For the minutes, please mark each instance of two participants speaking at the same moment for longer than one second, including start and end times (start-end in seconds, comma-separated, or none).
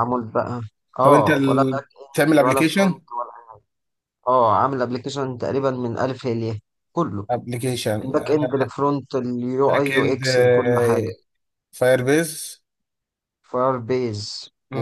1.0-3.0